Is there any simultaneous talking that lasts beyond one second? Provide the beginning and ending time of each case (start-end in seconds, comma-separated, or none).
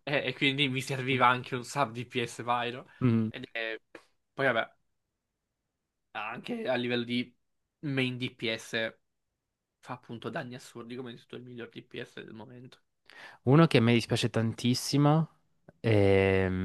none